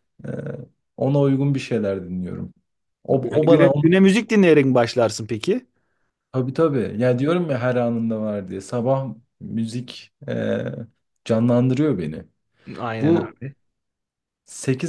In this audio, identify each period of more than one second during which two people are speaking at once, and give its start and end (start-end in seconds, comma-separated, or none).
none